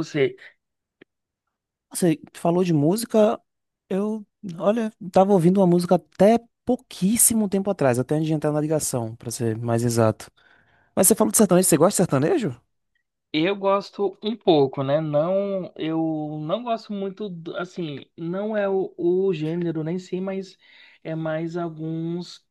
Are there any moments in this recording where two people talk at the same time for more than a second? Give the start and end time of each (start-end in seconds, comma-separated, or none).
none